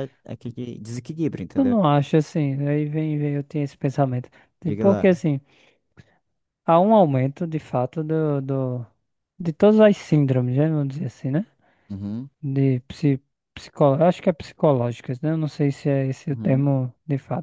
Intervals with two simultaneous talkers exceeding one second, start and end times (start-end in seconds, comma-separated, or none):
none